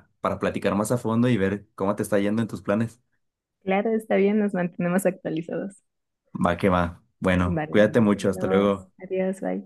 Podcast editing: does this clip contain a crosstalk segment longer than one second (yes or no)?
yes